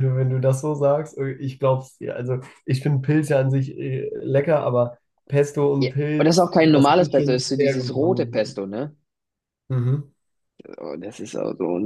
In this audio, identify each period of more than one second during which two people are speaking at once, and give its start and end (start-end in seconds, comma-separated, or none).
5.8-8.6